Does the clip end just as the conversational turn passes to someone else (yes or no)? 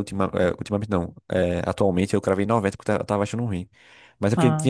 no